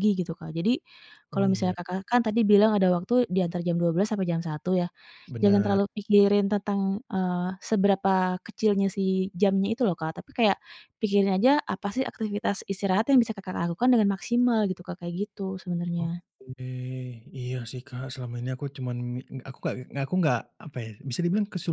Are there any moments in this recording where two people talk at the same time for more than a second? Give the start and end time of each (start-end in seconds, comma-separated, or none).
none